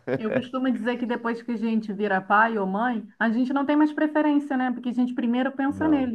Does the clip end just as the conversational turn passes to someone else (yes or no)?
no